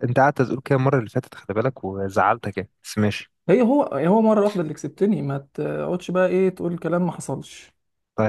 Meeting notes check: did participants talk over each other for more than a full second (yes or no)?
no